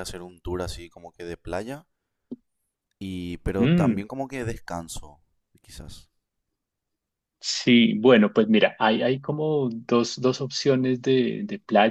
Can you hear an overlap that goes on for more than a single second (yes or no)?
no